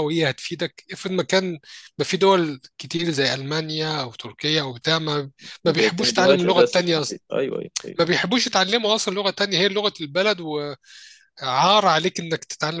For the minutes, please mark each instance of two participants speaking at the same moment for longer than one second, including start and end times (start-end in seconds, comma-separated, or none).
5.7-6.9